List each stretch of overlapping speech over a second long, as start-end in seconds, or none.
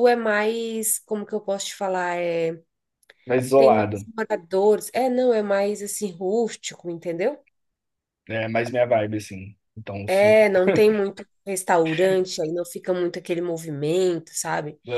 none